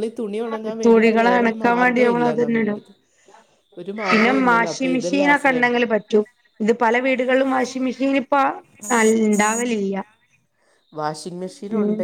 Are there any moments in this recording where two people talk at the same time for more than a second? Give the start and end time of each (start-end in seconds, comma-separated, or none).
0.8-2.7